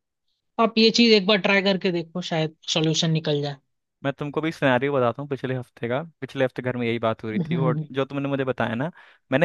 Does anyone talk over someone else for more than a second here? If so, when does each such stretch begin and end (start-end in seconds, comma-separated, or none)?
none